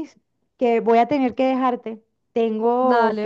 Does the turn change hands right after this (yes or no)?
no